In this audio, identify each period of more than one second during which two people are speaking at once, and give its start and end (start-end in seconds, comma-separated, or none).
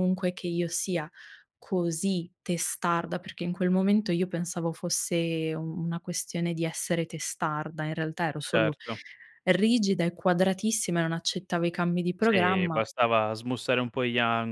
none